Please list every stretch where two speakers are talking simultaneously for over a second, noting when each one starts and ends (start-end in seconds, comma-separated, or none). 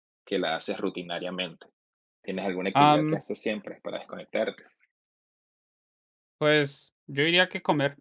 none